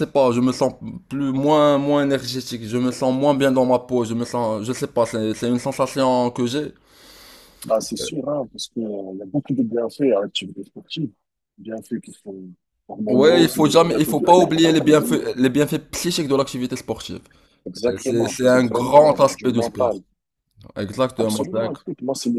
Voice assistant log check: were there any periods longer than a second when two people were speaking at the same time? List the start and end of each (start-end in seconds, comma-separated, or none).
13.1-15.2, 17.9-19.9